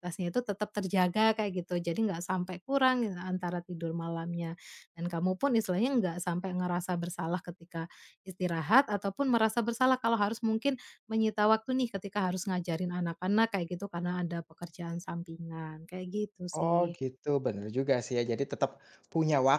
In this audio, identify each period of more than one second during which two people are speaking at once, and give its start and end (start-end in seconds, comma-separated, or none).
none